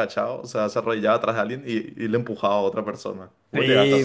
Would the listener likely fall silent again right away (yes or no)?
no